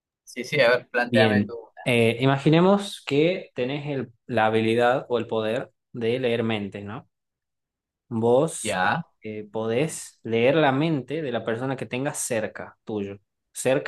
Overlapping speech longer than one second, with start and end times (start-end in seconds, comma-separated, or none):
none